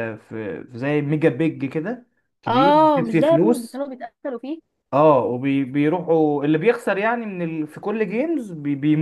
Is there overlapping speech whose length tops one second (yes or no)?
yes